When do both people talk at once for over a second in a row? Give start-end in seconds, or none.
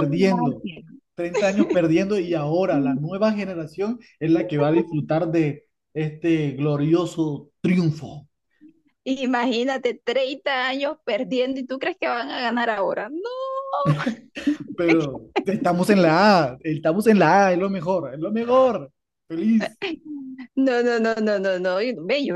none